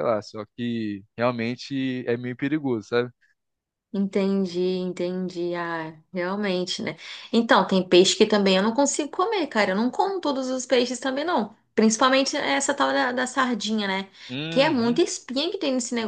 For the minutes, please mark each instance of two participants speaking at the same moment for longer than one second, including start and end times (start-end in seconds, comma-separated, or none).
none